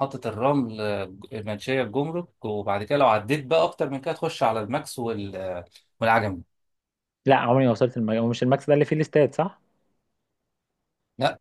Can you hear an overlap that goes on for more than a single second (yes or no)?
no